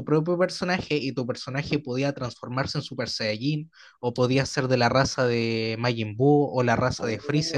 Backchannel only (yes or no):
no